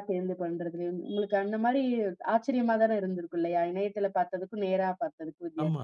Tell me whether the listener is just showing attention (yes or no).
no